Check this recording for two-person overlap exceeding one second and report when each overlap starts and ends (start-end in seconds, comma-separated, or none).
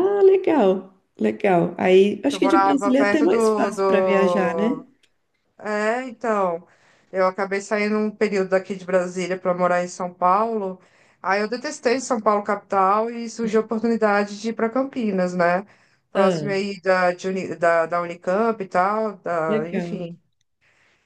2.3-4.8